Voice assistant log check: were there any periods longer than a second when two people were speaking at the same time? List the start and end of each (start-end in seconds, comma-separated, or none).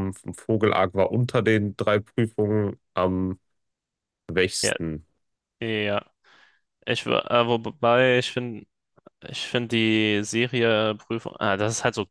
none